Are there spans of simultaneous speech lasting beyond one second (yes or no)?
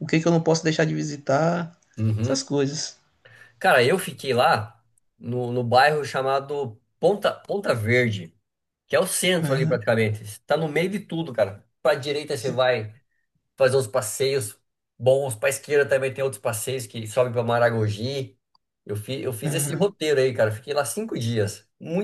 no